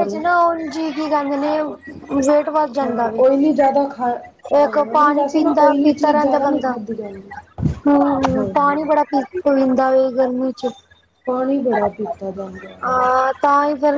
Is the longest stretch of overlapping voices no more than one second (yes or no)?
no